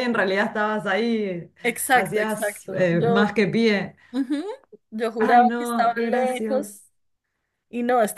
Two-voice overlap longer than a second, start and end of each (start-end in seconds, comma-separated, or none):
1.9-3.4, 5.2-6.8